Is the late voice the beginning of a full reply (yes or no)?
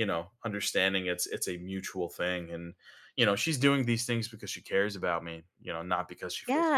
yes